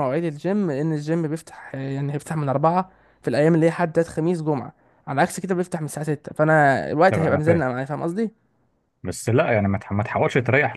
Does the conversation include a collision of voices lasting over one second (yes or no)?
no